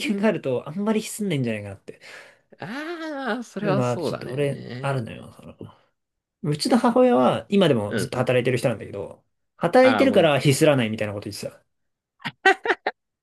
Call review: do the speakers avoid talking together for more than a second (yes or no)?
no